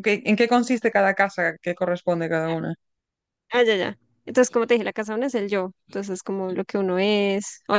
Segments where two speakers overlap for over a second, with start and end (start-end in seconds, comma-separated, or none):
none